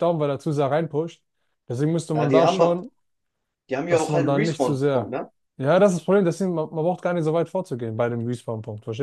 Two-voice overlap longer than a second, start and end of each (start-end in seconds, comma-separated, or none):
3.9-5.2